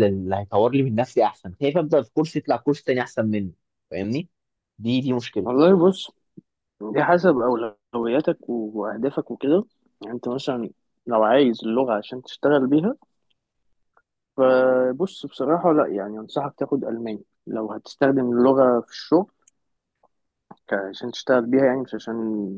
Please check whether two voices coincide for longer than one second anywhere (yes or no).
no